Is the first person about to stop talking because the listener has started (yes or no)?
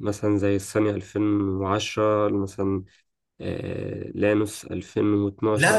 yes